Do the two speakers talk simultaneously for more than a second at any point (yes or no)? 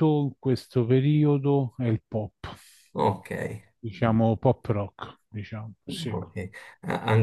no